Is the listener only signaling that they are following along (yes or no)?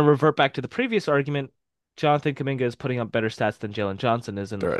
no